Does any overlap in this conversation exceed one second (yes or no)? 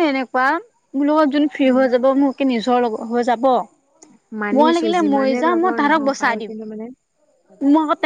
yes